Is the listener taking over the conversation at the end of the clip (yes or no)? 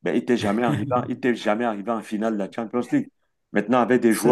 no